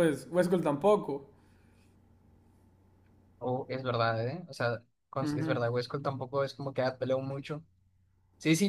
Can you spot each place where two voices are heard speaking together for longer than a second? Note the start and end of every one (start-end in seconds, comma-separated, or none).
none